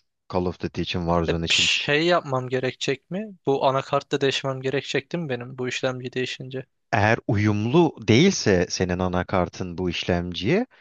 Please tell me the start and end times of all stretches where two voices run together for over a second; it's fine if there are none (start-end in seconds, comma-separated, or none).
none